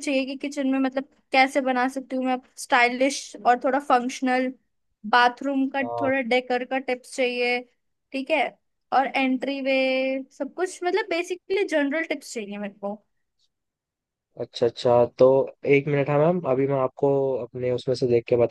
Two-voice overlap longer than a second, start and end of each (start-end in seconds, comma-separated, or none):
none